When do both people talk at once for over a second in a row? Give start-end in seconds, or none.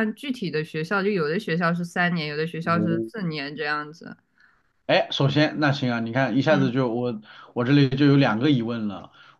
none